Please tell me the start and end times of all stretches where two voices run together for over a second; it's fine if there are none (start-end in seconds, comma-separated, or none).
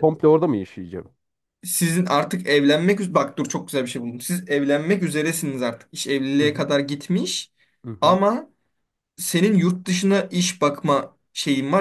none